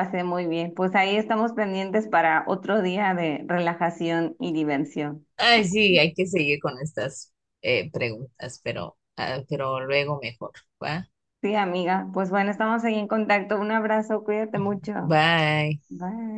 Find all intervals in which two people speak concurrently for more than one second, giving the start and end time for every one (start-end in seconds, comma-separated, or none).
none